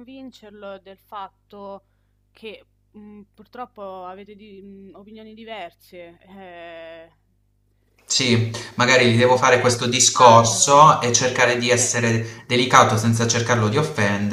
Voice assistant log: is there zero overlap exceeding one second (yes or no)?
no